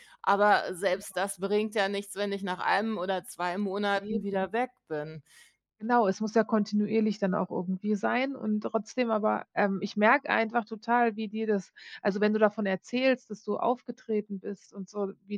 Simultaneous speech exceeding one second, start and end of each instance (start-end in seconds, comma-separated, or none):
none